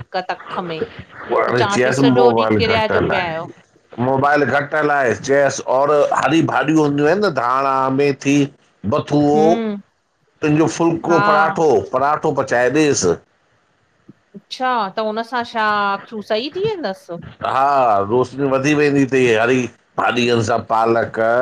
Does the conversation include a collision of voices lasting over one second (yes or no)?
yes